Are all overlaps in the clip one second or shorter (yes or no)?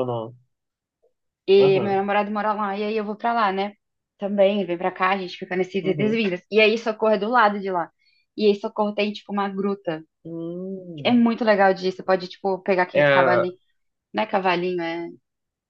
yes